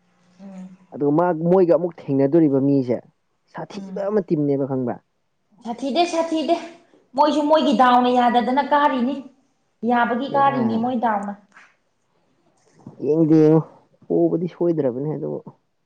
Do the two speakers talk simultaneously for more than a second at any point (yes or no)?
no